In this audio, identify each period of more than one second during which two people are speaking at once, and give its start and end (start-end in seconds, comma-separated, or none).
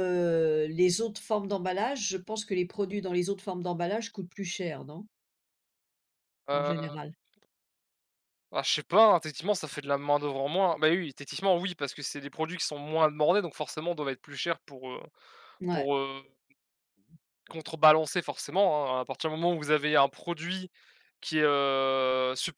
none